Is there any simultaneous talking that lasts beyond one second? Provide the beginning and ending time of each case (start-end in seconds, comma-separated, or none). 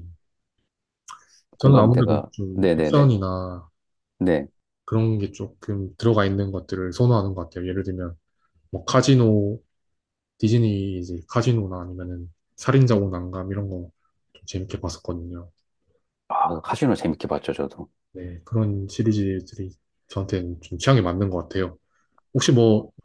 1.6-3.1